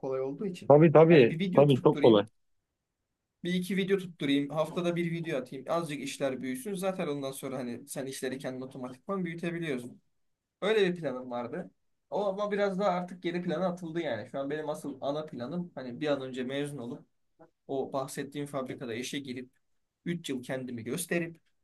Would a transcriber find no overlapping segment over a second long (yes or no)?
no